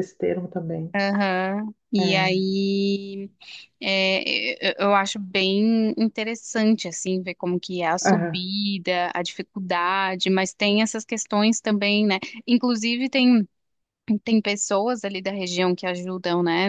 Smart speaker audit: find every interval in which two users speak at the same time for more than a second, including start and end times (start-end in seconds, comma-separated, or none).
none